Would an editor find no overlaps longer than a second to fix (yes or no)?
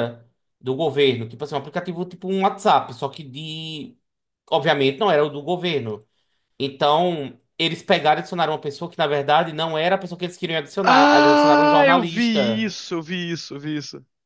no